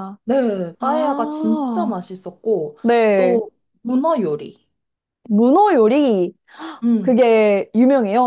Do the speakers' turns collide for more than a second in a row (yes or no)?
yes